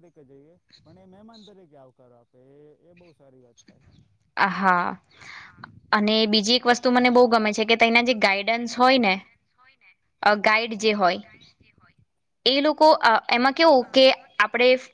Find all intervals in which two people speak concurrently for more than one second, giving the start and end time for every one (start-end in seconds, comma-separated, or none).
6.7-9.2